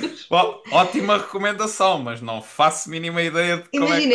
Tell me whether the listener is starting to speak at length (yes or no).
yes